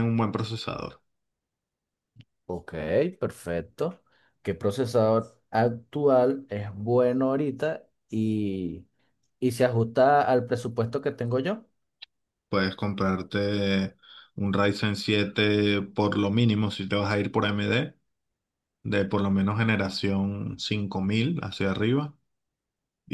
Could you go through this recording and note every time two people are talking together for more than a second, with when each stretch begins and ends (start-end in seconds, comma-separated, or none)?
none